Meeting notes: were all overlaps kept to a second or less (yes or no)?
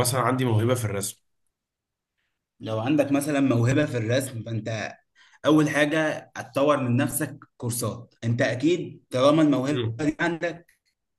yes